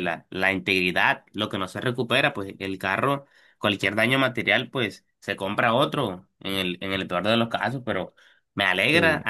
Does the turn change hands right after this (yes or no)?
no